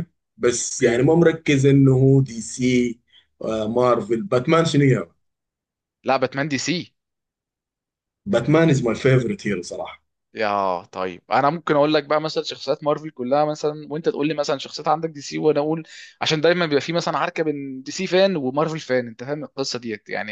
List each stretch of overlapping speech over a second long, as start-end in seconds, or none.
none